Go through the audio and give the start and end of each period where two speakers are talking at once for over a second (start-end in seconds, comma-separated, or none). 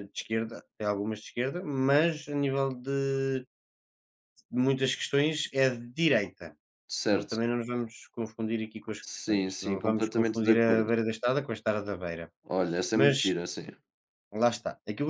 9.0-10.8